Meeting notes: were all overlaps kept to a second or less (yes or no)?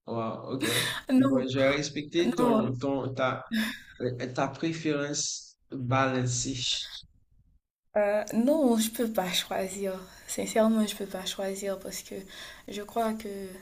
yes